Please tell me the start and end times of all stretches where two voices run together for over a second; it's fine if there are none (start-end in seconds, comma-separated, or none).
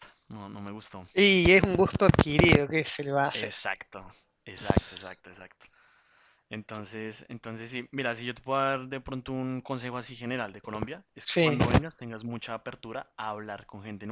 none